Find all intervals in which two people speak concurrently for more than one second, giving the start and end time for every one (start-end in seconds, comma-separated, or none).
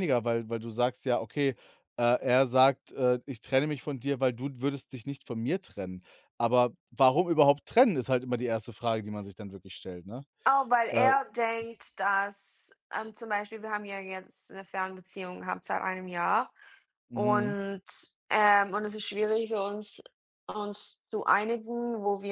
none